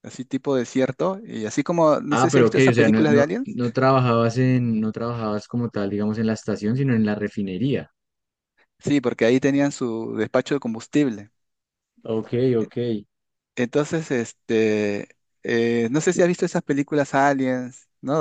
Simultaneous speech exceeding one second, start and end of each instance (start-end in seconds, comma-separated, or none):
2.1-3.6